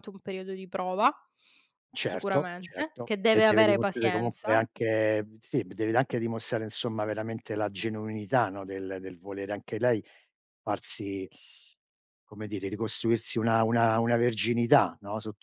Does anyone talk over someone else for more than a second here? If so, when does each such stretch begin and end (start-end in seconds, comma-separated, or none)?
2.0-4.6